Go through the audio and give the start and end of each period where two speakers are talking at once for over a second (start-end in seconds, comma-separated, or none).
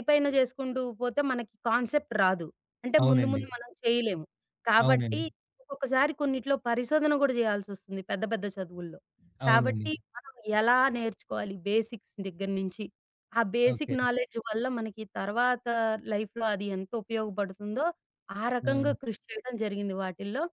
none